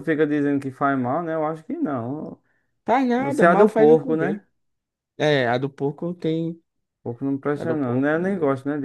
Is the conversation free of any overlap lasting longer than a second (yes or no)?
no